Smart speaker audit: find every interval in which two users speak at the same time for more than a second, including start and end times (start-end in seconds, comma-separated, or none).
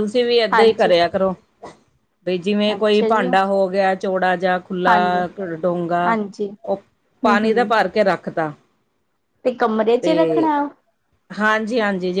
none